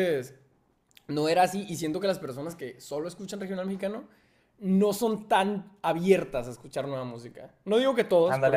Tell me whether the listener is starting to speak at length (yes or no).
no